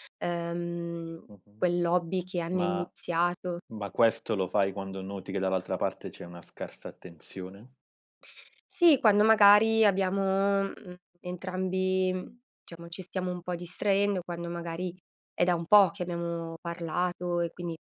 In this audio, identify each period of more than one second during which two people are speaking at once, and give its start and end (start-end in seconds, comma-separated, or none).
none